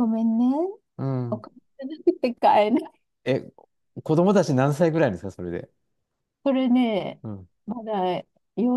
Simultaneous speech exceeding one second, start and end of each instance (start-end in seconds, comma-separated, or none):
none